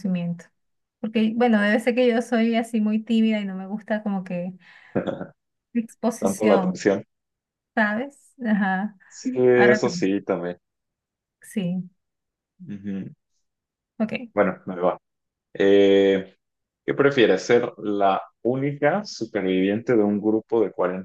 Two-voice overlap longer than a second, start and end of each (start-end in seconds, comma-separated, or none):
none